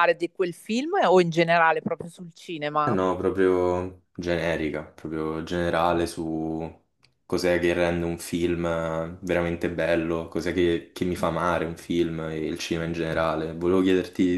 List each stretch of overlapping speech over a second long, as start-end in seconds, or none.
none